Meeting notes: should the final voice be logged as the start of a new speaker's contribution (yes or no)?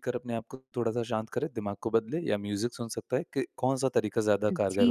yes